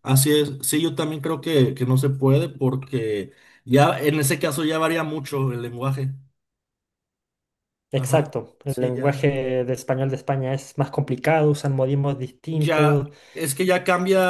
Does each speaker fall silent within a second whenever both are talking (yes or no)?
no